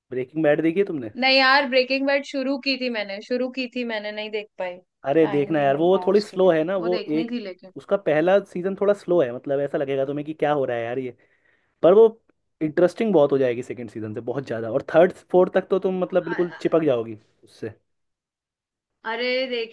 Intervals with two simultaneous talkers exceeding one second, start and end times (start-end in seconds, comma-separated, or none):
5.2-7.3